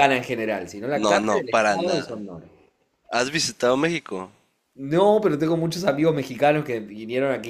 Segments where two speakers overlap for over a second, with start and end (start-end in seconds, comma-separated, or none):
0.9-2.2